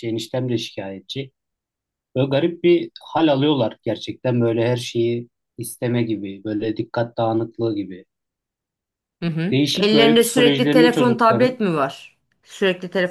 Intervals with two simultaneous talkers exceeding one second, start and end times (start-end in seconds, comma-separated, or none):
9.5-11.6